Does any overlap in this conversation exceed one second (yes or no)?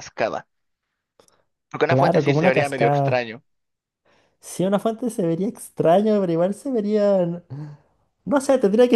yes